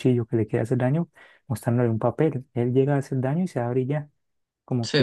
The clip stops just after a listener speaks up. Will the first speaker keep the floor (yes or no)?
yes